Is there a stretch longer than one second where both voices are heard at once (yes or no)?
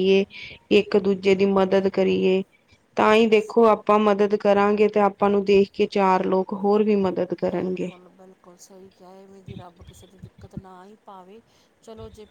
no